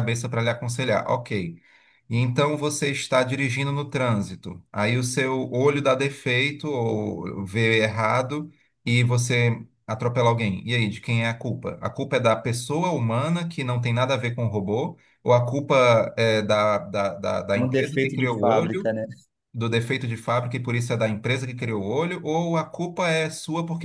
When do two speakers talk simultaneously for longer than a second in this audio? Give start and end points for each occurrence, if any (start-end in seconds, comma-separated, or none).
17.6-18.9